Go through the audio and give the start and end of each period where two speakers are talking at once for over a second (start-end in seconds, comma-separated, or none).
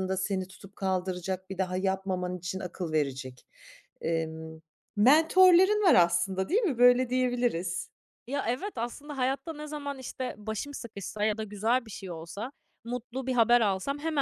none